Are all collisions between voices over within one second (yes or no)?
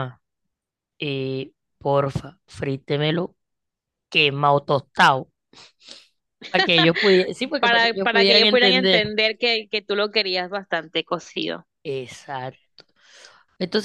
no